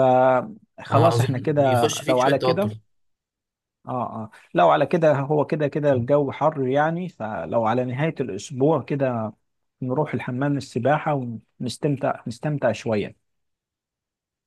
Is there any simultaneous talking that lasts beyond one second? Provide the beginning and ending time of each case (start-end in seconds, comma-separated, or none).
0.9-2.7